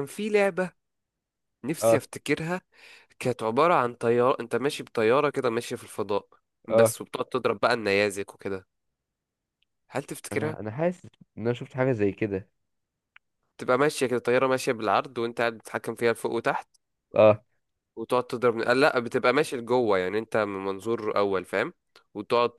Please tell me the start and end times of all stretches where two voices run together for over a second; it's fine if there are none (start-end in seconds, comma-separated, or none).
none